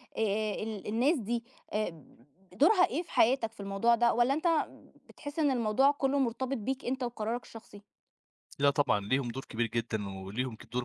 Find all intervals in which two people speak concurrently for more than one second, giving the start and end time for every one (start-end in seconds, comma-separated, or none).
none